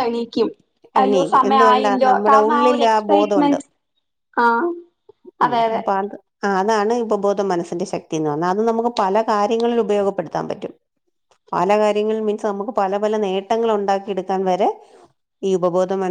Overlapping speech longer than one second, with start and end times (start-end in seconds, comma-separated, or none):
1.0-3.6